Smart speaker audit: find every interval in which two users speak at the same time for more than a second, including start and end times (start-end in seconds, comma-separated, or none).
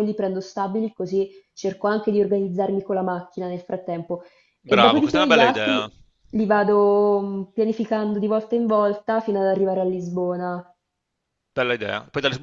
4.7-5.9